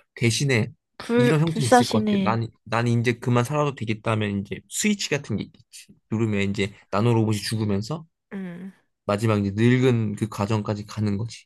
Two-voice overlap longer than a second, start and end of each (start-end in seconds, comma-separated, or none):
1.2-2.4